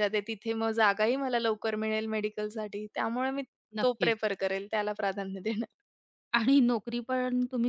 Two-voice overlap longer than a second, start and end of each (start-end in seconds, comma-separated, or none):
none